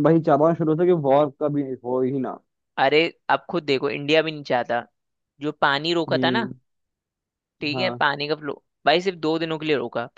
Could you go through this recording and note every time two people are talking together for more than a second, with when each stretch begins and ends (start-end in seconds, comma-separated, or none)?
none